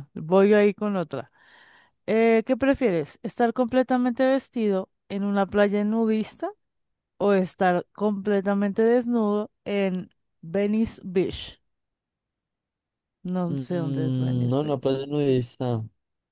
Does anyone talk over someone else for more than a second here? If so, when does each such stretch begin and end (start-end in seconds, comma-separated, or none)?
13.5-14.9